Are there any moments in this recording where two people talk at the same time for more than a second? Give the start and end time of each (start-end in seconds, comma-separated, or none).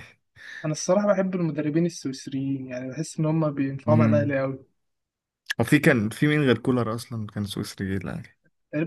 none